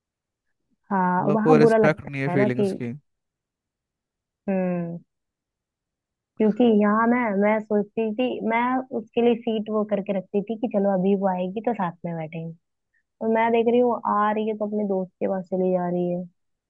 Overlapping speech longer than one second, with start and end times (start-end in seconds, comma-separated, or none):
1.2-2.6